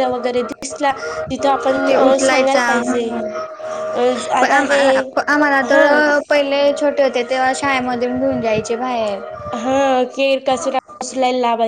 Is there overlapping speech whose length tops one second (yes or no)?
no